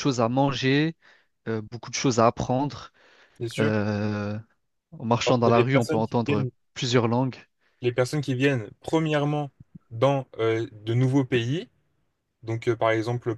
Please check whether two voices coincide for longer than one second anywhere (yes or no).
yes